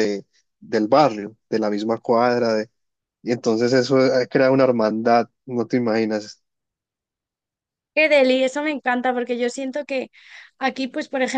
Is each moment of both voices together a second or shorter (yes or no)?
yes